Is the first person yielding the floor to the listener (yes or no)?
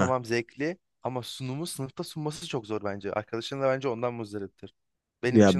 yes